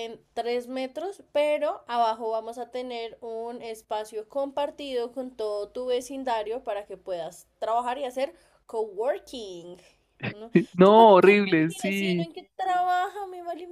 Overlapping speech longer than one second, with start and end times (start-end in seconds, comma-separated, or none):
10.5-12.3